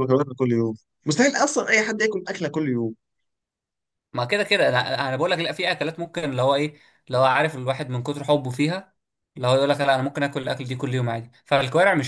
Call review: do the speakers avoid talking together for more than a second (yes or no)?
yes